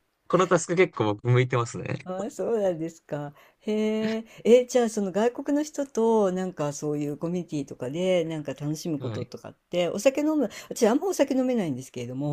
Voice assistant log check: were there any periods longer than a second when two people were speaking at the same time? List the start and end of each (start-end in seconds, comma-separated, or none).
none